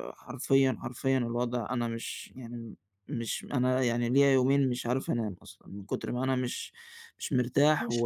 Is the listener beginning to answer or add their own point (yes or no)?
no